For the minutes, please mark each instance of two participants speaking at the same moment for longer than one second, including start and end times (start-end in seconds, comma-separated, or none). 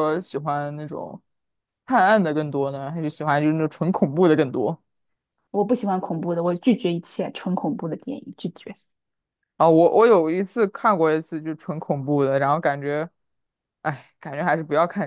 none